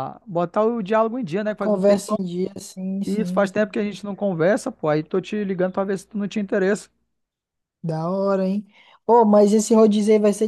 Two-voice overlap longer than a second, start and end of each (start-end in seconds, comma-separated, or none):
none